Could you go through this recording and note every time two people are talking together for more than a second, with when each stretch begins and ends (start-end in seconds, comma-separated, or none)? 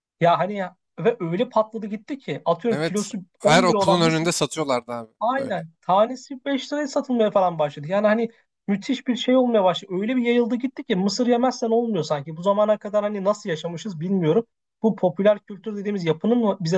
2.7-4.3